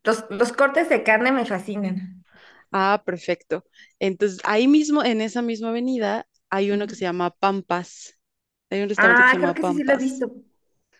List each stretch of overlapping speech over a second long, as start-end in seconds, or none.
9.0-10.3